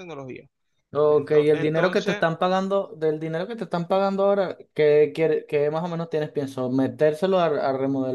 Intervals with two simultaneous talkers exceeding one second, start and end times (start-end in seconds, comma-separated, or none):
1.1-2.2